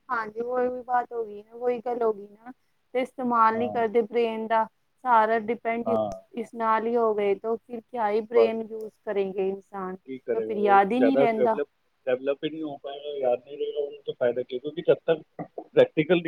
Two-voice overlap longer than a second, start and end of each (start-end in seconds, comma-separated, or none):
none